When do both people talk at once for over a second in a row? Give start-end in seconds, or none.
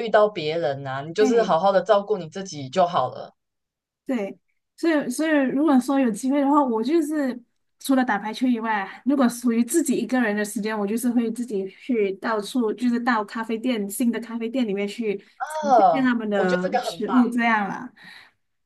15.4-17.2